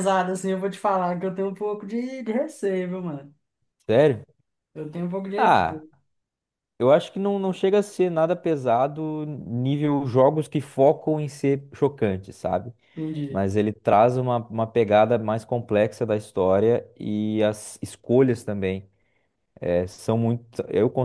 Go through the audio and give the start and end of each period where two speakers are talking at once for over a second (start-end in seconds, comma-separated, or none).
none